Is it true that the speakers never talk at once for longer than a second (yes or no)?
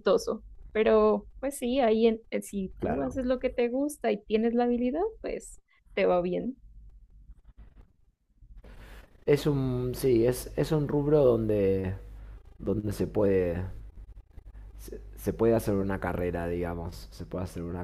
yes